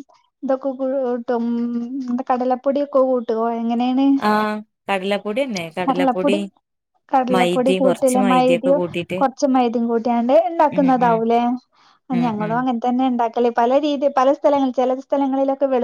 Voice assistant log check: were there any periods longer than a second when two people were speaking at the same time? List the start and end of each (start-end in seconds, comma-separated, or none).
7.3-8.8